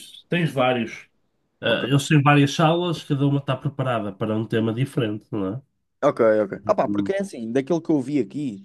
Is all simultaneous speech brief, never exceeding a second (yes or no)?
yes